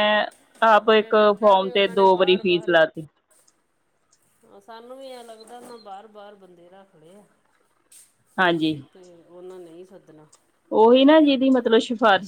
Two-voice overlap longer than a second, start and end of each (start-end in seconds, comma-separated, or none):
0.7-2.7